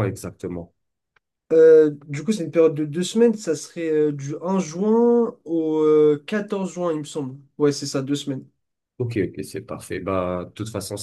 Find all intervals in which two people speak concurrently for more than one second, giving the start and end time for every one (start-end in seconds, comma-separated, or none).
none